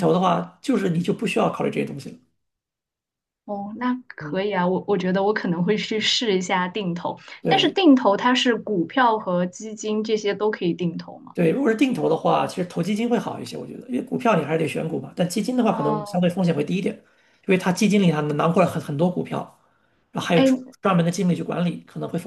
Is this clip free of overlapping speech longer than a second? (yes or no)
yes